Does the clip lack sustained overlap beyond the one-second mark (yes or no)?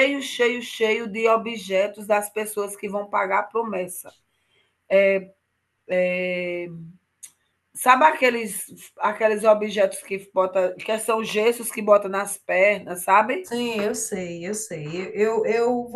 yes